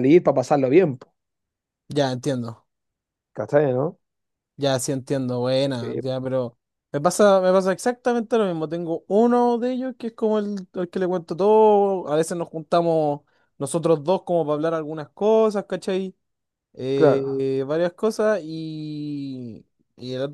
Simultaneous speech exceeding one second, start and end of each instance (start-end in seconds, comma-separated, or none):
none